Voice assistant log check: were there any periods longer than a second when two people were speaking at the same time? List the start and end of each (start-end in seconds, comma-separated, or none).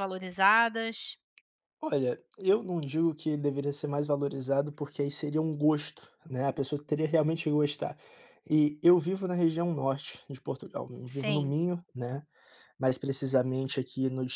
none